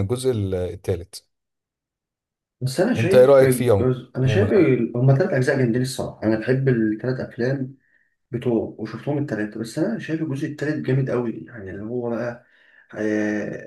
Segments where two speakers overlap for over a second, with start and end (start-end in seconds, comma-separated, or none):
3.0-4.5